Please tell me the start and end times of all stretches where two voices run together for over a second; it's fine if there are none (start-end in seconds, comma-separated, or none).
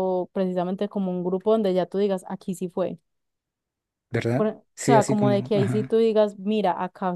4.3-6.0